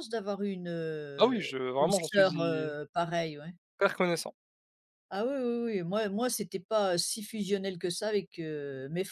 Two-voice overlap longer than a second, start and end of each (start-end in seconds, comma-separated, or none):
1.2-2.7